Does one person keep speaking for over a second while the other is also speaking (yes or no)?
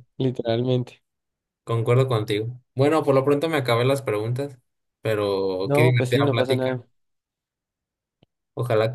yes